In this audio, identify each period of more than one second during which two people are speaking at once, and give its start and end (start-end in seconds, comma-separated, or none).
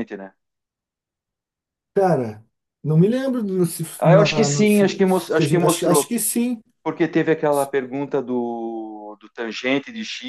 4.0-6.1